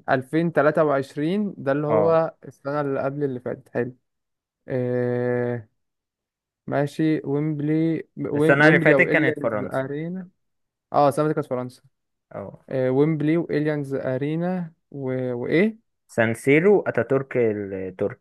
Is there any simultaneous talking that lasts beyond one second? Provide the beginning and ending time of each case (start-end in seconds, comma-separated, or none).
8.3-9.9